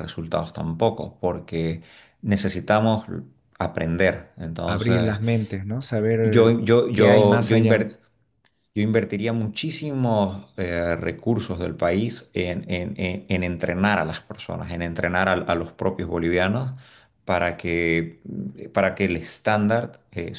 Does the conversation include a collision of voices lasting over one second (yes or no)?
yes